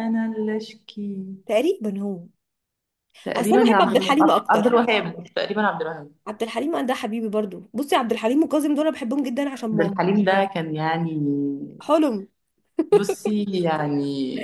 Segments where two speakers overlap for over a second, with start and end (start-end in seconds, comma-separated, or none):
3.4-4.7